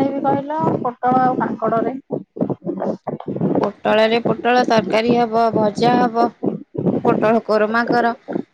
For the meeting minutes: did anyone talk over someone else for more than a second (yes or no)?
no